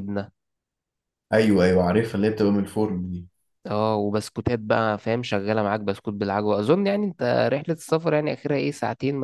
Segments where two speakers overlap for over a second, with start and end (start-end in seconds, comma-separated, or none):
none